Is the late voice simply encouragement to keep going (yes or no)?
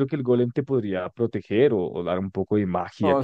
no